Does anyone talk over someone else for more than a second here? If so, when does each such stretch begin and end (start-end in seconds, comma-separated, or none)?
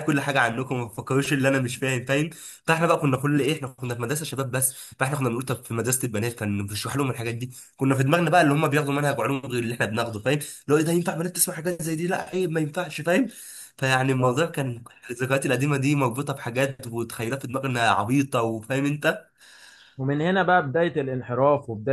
none